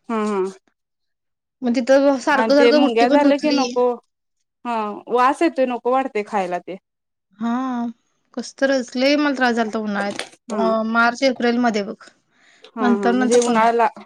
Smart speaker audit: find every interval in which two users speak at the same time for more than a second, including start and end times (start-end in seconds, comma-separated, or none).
2.4-3.7